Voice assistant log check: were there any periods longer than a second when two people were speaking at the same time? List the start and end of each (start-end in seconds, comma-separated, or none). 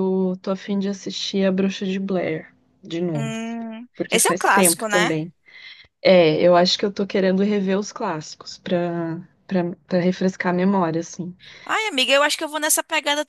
3.9-5.2